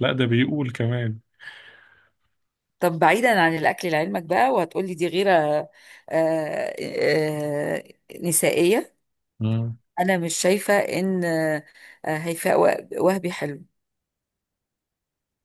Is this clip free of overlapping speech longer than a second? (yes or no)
yes